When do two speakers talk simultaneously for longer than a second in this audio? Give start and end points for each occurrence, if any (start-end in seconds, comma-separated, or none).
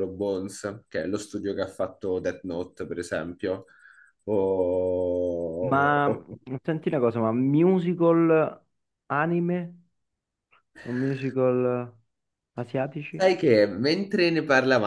none